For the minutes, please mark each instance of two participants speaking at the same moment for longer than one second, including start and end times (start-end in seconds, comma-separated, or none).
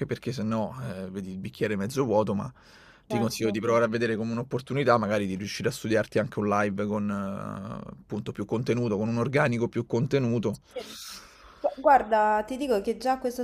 none